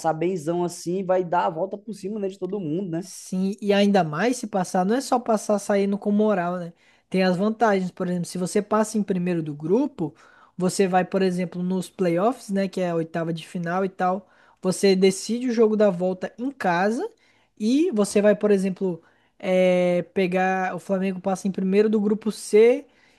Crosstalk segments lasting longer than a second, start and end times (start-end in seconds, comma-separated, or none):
none